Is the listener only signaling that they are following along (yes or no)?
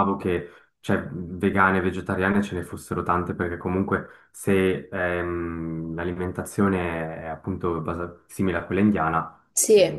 no